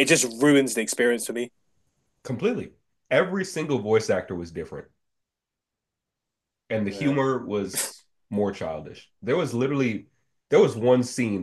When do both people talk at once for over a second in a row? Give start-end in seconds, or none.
none